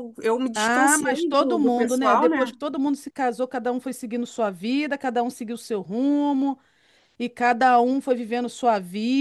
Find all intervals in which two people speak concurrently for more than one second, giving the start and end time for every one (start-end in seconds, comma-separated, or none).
0.5-2.5